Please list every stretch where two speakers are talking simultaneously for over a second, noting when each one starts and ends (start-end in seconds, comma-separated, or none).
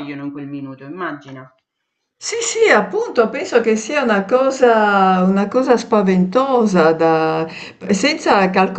none